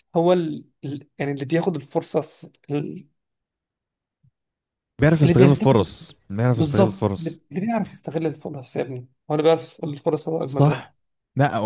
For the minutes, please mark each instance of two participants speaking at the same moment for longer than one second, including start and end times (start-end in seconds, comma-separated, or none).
5.2-7.4